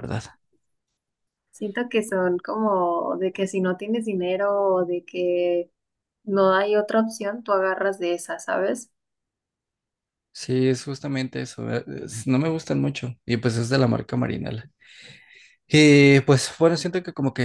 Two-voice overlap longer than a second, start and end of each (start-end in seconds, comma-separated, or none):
none